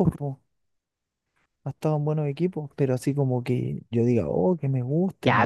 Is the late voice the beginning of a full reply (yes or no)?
yes